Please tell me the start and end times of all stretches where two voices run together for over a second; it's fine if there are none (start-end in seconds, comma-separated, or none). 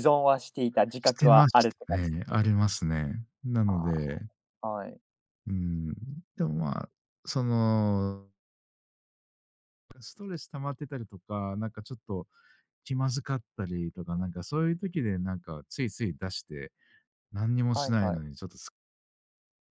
1.0-2.4